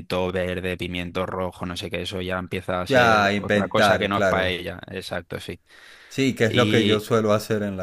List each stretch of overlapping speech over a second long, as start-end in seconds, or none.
2.9-4.5